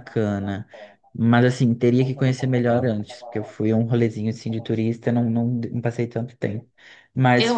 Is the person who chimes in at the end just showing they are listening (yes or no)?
no